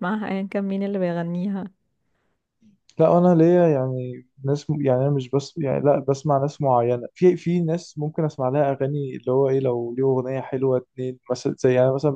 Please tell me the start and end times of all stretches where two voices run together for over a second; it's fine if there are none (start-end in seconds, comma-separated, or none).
none